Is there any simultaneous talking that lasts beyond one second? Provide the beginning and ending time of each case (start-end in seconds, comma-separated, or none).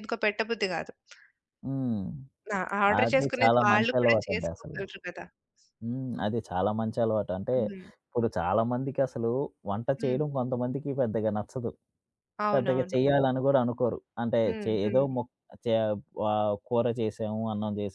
3.0-4.8